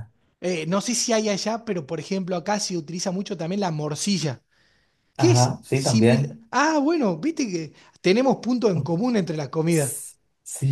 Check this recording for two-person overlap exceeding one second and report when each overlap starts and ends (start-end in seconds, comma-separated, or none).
5.2-6.4